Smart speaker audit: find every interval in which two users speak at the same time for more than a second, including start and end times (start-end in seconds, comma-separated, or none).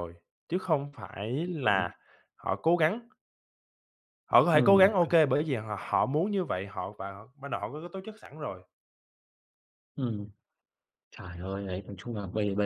none